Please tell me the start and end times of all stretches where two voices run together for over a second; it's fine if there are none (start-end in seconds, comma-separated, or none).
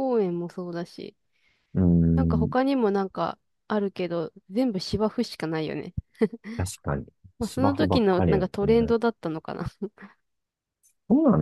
7.4-8.9